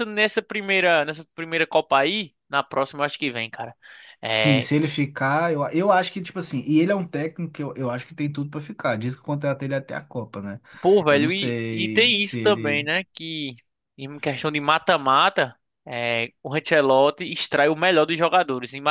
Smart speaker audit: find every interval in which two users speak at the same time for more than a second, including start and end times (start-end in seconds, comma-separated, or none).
11.1-12.9